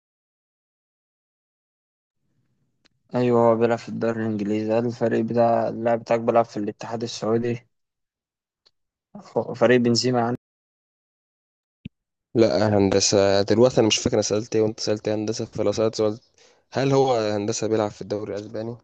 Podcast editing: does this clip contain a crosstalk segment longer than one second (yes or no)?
no